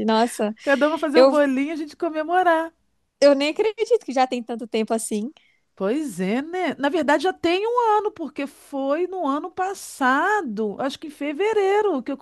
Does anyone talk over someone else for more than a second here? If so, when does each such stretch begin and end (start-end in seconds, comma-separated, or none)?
none